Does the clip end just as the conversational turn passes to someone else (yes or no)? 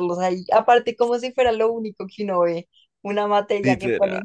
no